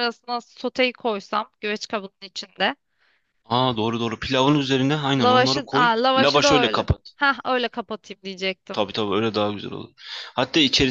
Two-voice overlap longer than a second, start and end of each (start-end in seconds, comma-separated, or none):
5.2-7.1